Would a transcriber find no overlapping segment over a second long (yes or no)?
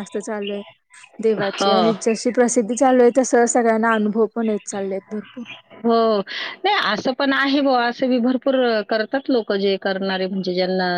yes